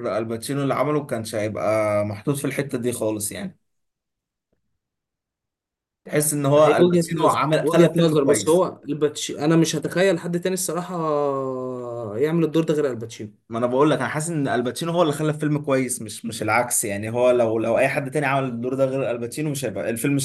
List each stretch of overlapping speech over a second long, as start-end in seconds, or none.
6.6-8.7